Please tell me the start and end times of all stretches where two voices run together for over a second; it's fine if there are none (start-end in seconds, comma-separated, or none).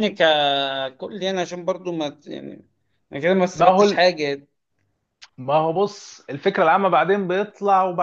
none